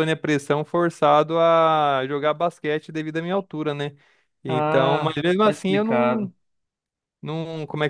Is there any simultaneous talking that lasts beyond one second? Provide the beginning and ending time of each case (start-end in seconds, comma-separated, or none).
4.5-6.3